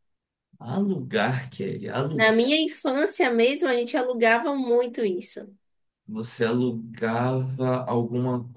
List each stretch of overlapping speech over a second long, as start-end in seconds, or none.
none